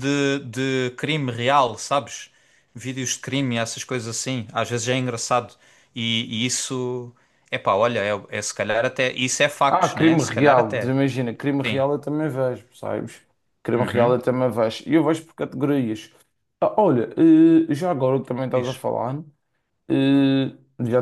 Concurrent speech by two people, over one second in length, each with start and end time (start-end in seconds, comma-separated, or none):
9.7-10.9